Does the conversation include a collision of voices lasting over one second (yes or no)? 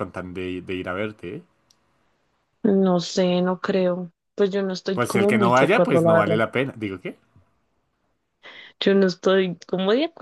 yes